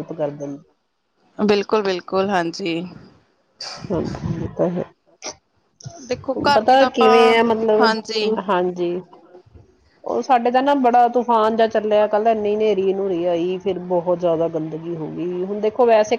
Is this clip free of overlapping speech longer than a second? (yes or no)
no